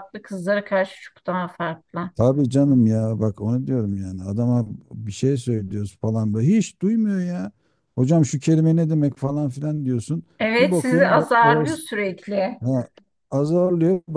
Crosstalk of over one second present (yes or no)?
yes